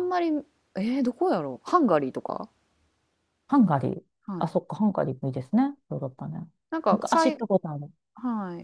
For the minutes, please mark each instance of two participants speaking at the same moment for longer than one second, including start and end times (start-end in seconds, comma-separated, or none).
none